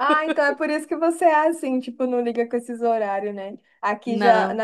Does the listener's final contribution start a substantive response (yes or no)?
no